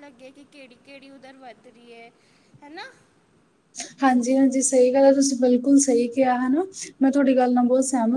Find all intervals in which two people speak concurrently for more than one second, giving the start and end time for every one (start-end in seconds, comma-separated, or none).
none